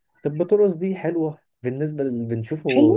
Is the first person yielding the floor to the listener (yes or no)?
no